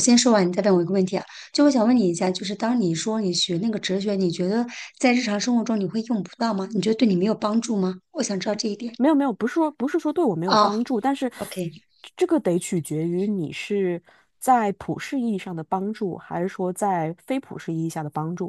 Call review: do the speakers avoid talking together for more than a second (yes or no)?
yes